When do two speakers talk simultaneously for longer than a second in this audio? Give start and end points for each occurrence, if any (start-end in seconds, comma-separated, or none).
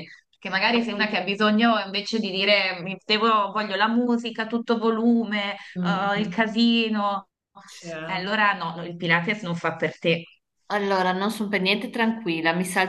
none